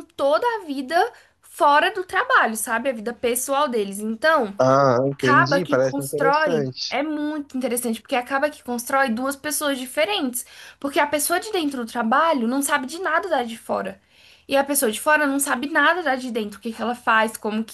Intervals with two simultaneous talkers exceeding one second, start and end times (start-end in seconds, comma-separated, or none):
5.1-7.0